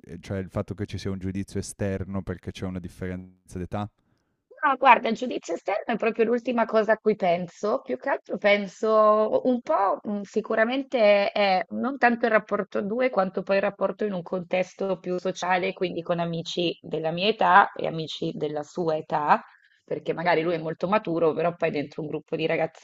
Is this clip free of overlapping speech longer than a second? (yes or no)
yes